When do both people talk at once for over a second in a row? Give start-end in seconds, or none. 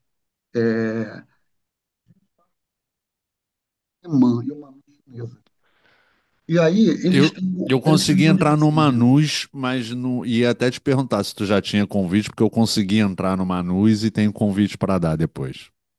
7.0-9.2